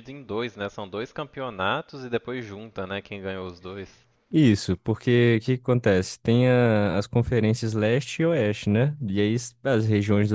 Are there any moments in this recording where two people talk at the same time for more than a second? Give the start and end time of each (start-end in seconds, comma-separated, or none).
none